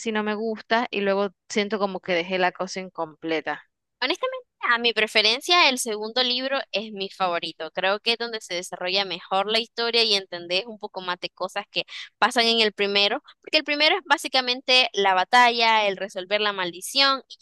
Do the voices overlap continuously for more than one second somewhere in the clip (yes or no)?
no